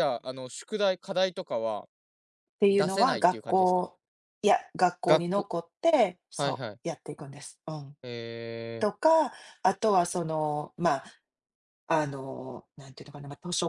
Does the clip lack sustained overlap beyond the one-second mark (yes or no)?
no